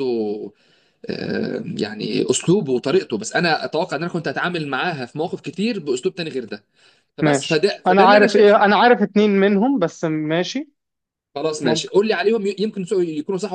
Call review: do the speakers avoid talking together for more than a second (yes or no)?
no